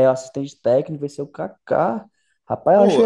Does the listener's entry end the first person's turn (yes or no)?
no